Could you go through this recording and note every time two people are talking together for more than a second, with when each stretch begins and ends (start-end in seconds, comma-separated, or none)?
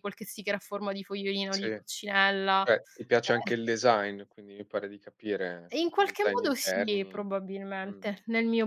5.7-7.2